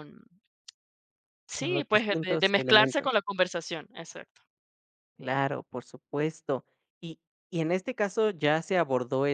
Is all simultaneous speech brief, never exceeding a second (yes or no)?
no